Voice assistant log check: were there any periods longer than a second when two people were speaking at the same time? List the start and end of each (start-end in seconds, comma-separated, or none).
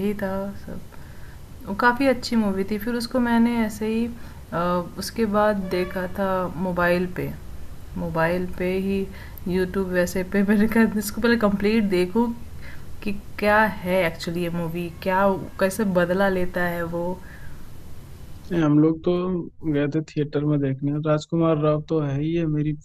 none